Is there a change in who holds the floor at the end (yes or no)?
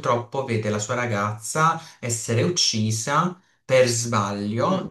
no